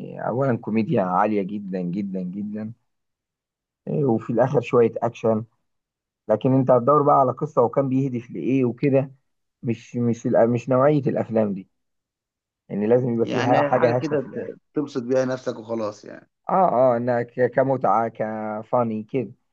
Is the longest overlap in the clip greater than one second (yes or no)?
yes